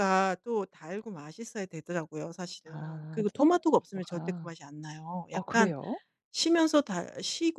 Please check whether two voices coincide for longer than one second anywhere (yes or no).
yes